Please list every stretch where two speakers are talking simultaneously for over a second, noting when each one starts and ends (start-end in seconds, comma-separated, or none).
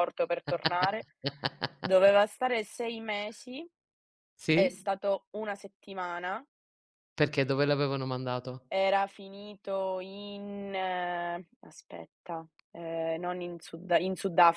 none